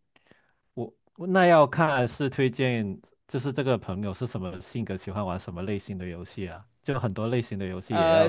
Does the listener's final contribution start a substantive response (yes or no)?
yes